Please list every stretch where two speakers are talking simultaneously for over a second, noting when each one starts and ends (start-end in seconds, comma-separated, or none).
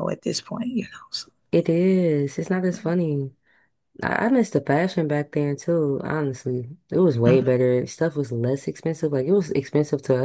none